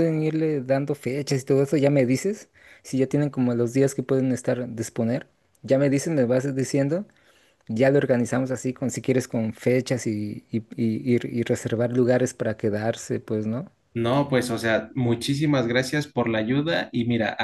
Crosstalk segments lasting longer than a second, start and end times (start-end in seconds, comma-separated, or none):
none